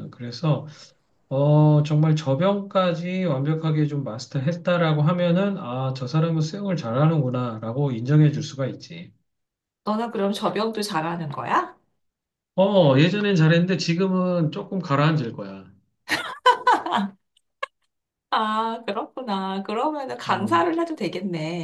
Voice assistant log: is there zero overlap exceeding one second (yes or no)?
yes